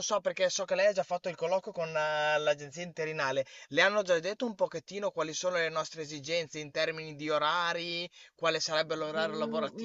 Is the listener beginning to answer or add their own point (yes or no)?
yes